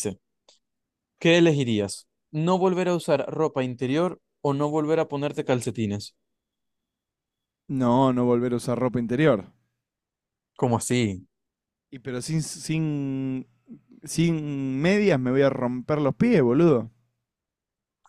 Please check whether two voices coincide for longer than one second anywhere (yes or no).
no